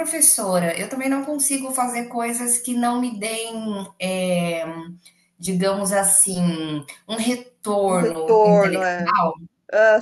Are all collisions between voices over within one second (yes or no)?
no